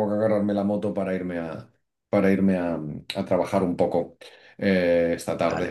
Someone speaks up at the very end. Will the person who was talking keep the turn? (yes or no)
yes